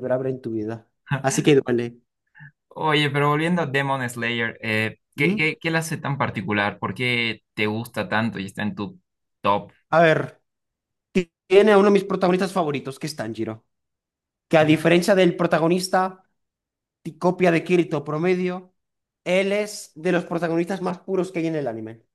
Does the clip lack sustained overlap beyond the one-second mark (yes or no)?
yes